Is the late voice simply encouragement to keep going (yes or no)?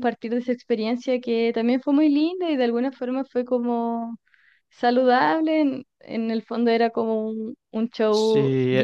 yes